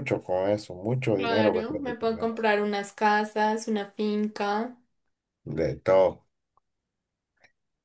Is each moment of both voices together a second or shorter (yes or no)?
no